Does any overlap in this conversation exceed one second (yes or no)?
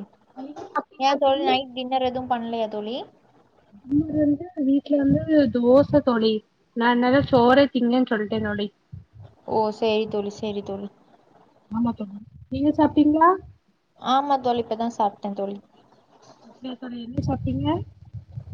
no